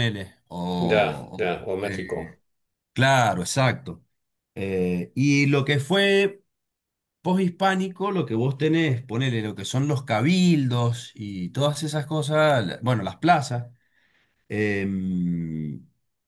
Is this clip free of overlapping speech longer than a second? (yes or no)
no